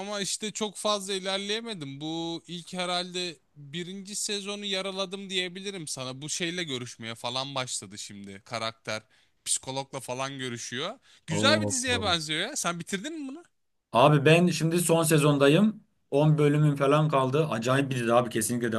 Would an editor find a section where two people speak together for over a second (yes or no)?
no